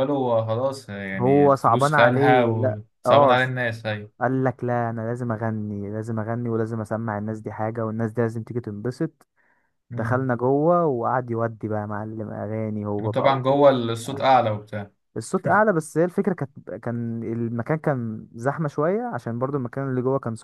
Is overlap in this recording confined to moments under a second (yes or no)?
no